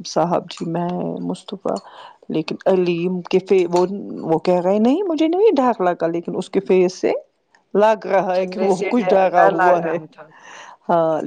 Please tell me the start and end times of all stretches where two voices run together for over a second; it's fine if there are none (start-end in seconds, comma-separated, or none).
8.4-10.0